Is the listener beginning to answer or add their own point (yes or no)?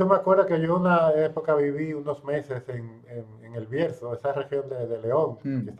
no